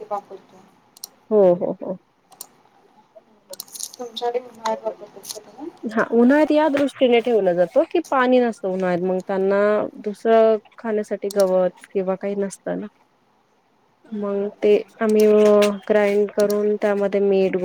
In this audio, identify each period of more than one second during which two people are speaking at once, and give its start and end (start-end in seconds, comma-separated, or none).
none